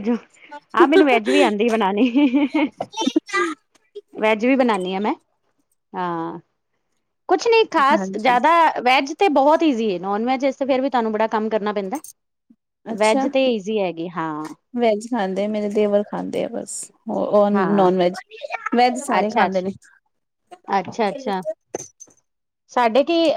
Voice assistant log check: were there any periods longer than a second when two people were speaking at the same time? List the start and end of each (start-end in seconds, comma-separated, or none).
none